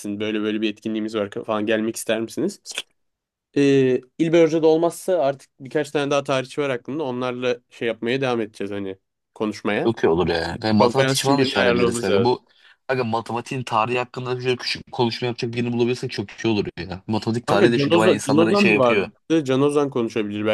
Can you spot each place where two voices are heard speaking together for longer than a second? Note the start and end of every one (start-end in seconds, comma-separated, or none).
10.8-12.3, 17.5-19.1